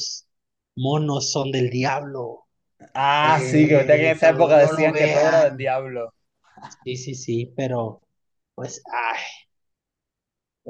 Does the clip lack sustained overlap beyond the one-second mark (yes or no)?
no